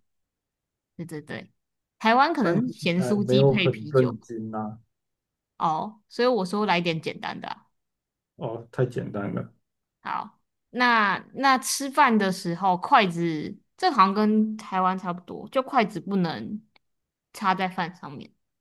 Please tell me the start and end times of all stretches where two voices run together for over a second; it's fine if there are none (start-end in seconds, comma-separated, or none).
2.4-4.3